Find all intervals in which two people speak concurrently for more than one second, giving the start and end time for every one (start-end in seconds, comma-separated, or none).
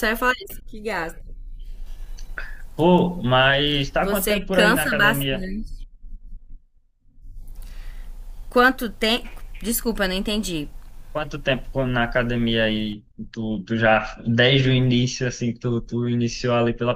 4.0-5.4